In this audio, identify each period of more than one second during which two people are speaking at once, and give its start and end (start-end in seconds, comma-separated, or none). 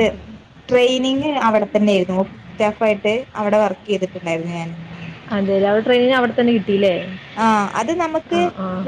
none